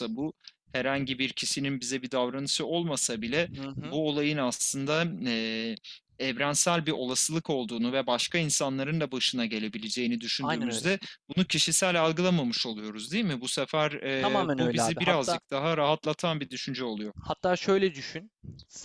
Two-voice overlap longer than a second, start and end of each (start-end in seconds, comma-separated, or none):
14.2-15.4